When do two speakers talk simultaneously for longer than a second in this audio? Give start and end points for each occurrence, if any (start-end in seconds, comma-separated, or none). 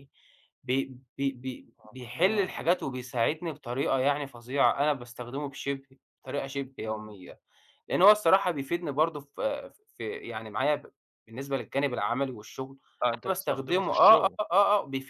13.1-14.4